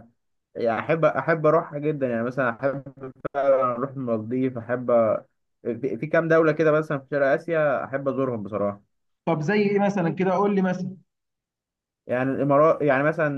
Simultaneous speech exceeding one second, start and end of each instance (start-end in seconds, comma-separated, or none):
none